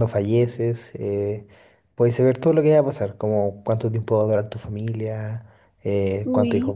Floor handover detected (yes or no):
no